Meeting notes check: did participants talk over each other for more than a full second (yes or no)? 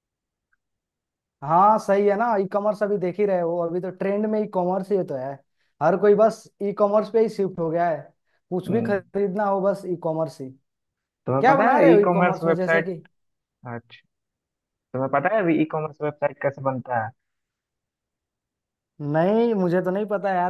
yes